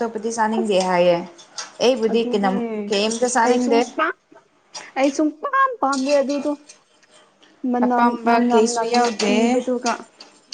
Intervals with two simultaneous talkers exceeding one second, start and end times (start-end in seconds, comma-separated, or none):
7.8-9.6